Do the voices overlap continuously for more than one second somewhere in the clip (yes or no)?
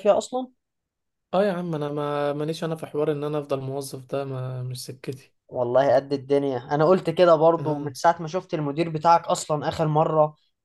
no